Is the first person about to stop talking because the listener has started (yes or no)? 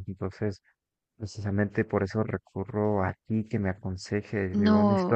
yes